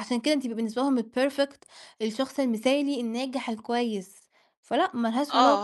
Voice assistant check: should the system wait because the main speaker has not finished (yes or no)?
no